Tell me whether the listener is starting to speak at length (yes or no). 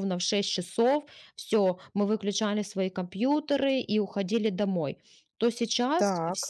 no